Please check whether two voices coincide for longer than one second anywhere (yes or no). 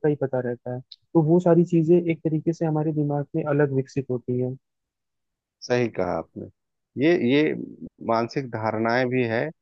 no